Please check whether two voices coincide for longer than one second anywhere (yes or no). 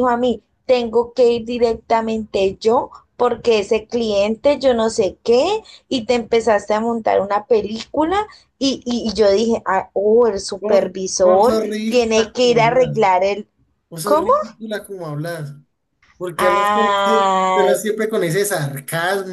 yes